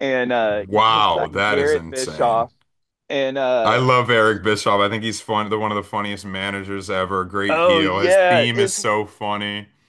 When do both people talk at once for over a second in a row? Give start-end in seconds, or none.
0.7-2.5, 7.5-8.8